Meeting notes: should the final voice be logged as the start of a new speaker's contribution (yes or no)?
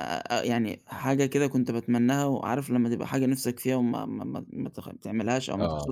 no